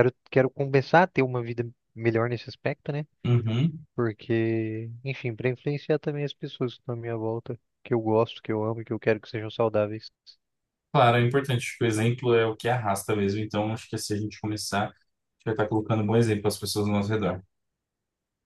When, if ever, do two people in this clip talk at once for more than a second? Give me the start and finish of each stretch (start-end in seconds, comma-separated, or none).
none